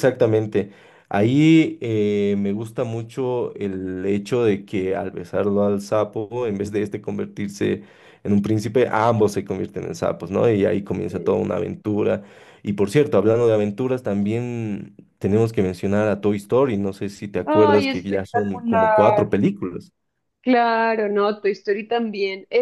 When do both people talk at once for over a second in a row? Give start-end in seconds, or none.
17.5-19.3